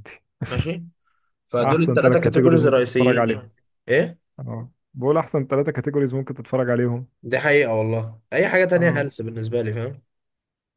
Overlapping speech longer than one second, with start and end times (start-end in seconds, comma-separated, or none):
1.6-3.4